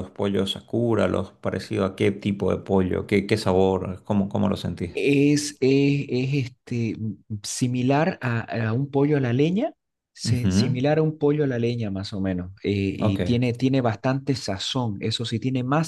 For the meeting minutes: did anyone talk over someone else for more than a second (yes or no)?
no